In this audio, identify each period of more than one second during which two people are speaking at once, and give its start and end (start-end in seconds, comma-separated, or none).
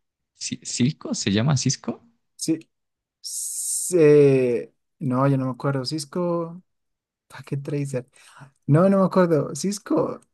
none